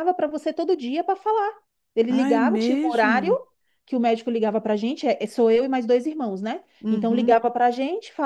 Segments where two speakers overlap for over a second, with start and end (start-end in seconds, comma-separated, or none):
2.1-3.3